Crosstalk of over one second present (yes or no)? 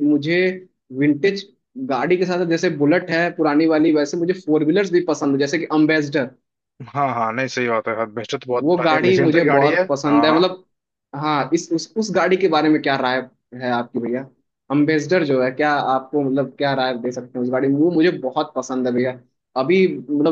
yes